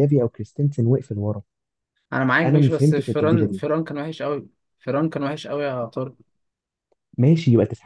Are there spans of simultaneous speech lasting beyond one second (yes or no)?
yes